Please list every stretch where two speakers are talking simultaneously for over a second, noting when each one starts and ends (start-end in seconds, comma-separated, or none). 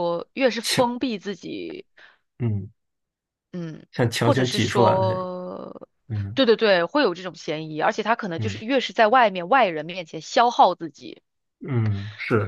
3.9-5.3